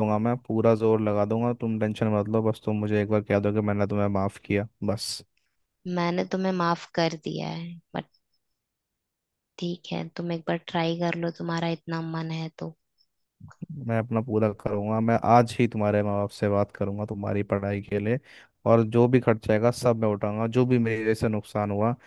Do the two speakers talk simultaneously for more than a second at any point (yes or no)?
no